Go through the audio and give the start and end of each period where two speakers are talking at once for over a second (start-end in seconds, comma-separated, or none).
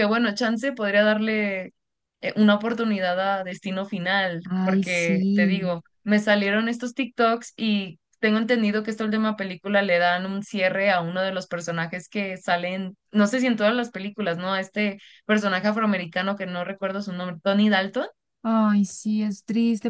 4.4-5.8